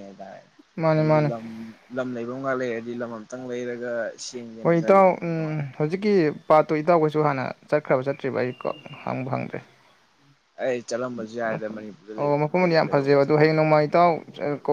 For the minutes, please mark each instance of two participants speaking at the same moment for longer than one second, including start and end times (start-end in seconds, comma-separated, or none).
12.2-13.7